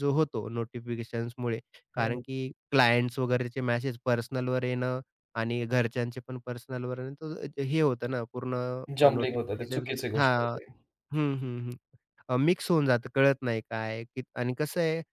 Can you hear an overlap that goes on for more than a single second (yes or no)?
yes